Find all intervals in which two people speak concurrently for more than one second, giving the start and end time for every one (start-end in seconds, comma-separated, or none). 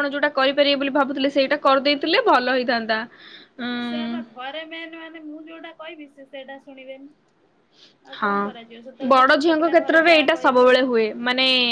9.1-10.7